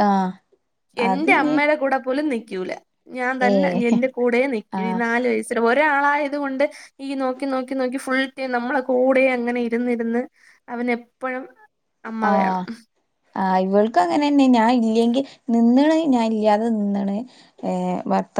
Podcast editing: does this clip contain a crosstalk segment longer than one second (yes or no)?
no